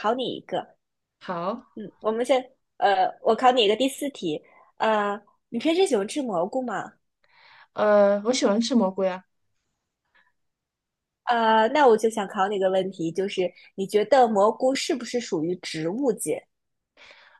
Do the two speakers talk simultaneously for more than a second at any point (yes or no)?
no